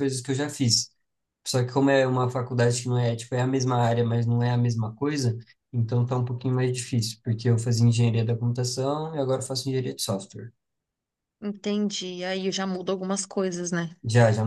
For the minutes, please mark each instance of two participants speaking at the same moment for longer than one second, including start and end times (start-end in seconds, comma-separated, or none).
none